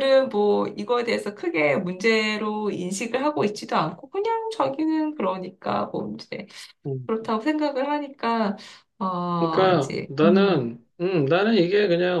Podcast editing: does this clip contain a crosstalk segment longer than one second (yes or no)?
yes